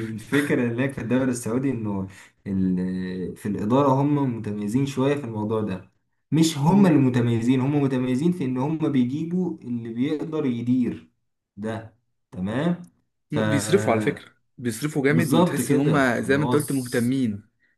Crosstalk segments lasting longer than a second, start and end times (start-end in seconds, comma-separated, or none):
15.1-17.1